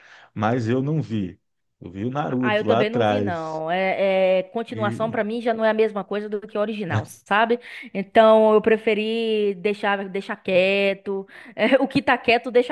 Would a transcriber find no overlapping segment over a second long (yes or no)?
no